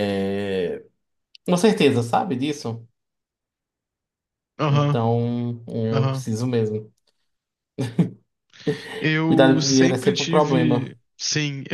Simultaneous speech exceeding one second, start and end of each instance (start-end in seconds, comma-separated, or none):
9.3-10.9